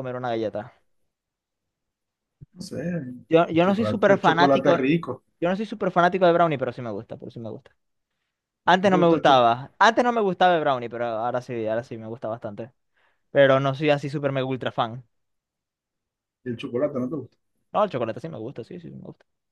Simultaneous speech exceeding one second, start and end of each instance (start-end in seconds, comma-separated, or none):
3.3-4.8